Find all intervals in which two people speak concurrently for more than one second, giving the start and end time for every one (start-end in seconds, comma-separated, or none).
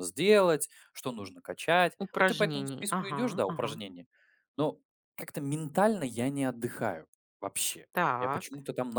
2.0-3.8